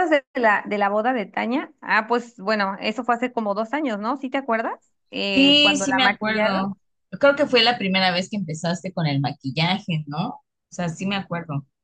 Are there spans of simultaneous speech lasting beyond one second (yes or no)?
yes